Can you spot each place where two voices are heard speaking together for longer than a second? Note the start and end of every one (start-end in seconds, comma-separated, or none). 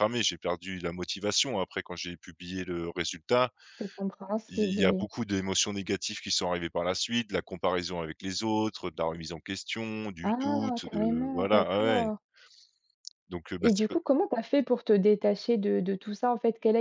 10.2-12.1